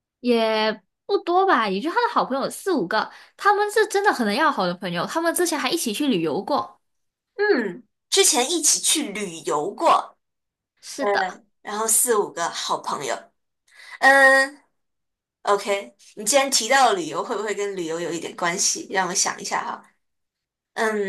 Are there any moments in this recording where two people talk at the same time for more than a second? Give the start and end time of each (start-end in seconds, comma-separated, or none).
none